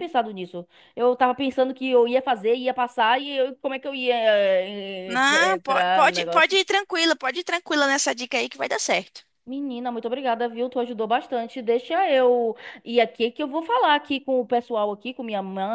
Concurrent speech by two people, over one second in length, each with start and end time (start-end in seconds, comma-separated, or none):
5.1-6.6